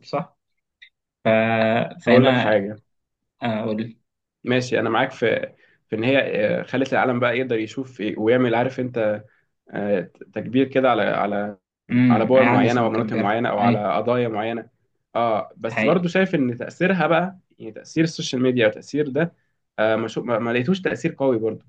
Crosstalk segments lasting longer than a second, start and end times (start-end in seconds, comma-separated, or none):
12.1-13.9